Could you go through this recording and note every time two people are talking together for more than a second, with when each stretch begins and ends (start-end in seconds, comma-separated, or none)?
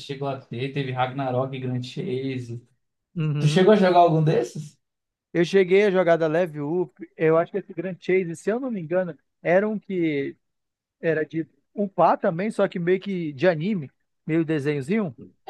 none